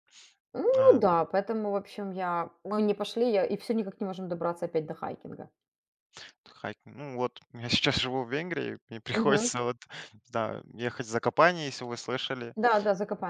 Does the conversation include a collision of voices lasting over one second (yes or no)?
no